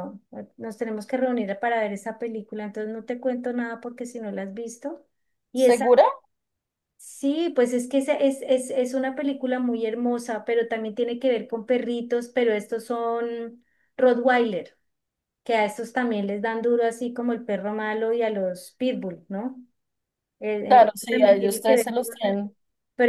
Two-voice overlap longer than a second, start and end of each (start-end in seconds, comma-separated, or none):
20.6-22.1